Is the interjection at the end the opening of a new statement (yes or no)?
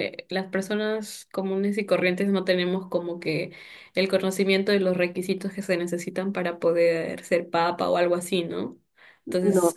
no